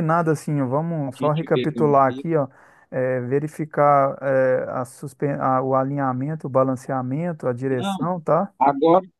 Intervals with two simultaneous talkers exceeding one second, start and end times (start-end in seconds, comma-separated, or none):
1.1-2.3